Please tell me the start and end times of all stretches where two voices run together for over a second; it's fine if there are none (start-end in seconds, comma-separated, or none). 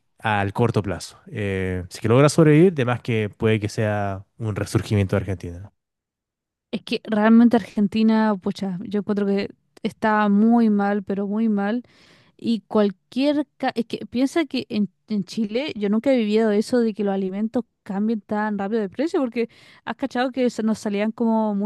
none